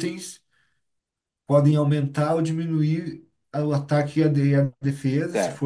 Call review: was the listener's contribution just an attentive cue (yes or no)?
no